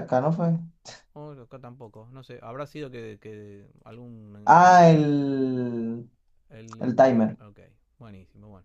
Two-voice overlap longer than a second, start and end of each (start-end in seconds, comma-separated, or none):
none